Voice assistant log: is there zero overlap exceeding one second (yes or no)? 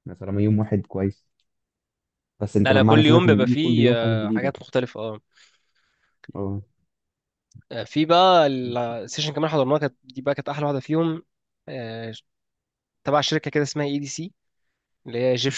no